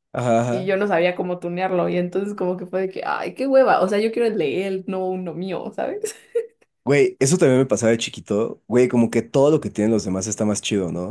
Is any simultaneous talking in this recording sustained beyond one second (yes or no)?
no